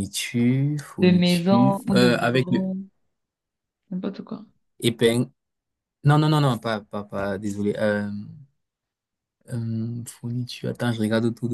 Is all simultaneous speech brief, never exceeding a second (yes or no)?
no